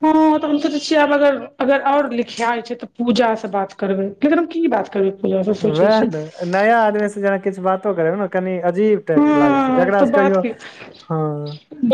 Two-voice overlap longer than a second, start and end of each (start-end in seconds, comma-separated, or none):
9.2-10.4